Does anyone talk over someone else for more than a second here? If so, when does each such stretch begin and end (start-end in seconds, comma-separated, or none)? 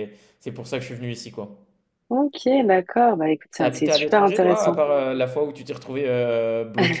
3.6-4.8